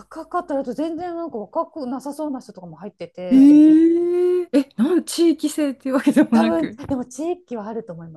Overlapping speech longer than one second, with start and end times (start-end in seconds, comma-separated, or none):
none